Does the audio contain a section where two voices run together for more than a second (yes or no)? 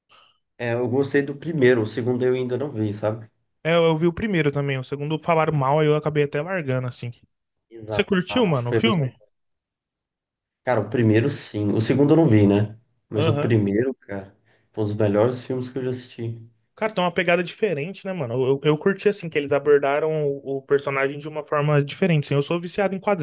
yes